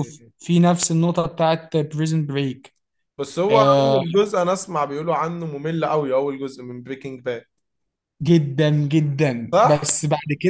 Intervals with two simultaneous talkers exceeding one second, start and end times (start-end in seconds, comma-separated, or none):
none